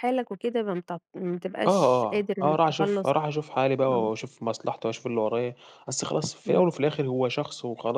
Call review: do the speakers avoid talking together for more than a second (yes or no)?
no